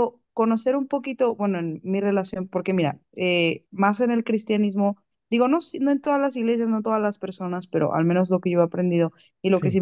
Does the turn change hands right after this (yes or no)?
no